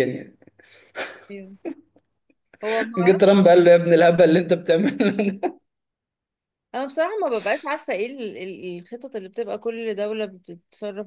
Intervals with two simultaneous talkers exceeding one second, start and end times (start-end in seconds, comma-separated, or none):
none